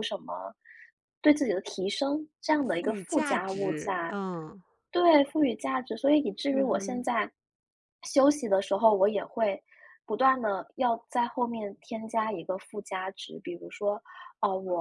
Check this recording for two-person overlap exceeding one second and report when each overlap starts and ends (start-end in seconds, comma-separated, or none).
2.6-4.2